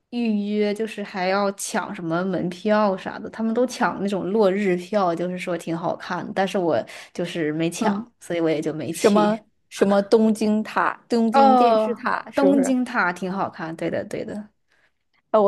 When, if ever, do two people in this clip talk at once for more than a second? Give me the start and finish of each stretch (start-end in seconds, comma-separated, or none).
11.3-12.8